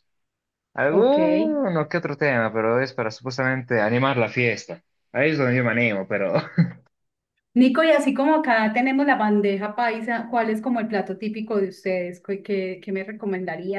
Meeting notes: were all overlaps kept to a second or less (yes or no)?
yes